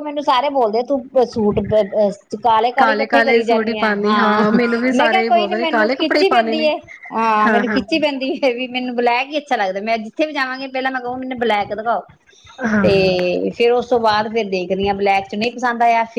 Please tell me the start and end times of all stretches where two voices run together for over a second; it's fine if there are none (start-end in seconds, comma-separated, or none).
2.8-4.2, 4.9-6.7